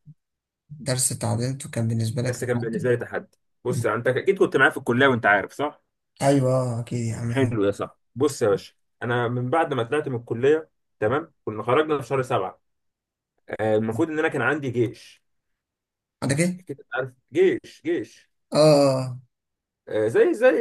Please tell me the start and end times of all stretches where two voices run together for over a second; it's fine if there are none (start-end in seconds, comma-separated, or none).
none